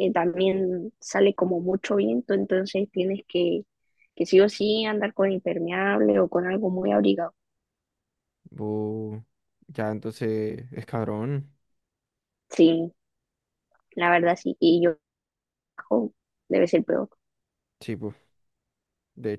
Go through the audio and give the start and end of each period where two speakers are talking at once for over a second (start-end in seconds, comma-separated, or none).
none